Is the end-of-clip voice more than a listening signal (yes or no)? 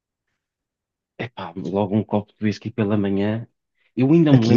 no